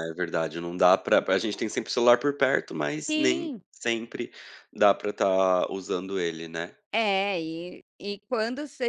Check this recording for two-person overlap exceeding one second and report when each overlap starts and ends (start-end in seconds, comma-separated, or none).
none